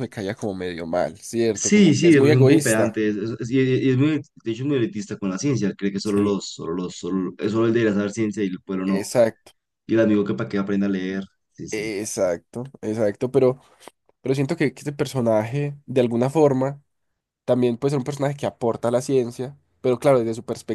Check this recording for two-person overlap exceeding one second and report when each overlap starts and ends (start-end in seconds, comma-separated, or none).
1.5-3.0